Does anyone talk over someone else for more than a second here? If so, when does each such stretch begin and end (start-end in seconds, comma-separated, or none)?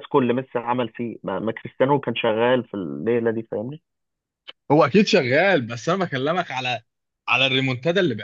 none